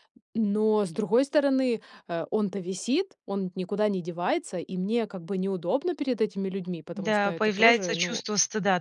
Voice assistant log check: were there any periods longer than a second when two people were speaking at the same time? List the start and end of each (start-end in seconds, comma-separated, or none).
6.9-8.2